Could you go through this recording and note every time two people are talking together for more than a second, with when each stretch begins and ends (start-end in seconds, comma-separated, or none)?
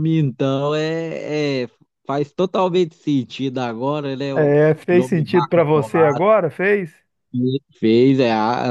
4.3-6.2